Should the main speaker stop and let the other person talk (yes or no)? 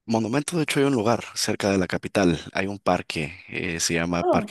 no